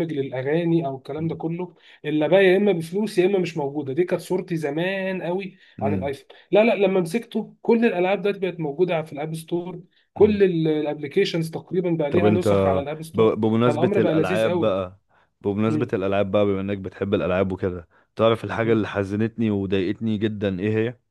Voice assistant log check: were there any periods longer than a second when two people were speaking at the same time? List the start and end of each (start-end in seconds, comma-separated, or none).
13.1-14.8